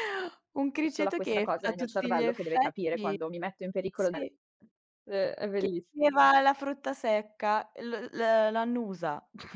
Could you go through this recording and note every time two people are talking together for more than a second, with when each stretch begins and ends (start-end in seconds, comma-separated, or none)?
0.8-3.2